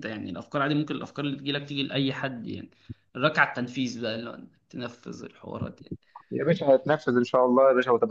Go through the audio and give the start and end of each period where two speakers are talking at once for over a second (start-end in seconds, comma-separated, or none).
none